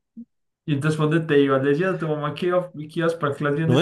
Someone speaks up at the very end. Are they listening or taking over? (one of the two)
taking over